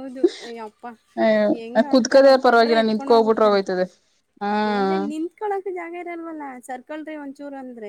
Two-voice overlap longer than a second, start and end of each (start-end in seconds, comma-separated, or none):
1.9-3.6